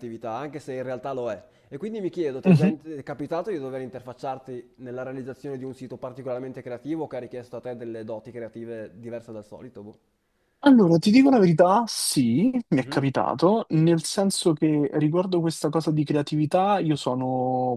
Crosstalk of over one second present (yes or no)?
no